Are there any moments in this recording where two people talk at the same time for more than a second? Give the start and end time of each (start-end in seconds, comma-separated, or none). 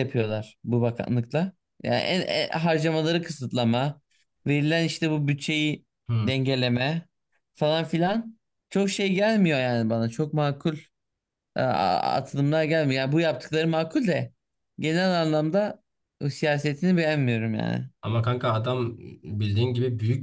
none